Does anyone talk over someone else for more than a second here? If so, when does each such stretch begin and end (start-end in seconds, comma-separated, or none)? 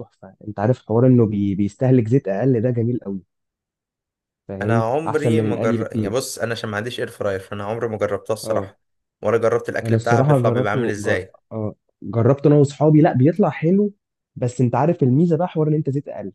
4.6-6.3, 9.8-11.3